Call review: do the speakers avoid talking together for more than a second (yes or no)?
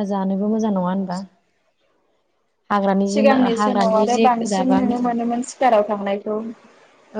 no